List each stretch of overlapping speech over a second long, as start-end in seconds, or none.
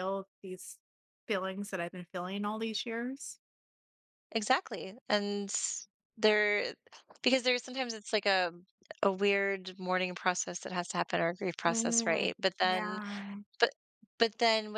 11.7-13.0